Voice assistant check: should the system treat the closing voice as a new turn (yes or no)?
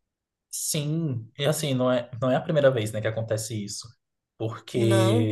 no